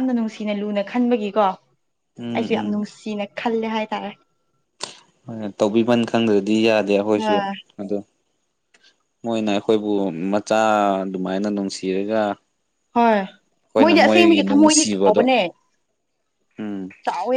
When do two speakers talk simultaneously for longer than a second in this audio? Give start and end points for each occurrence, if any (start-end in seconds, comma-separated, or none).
13.8-15.2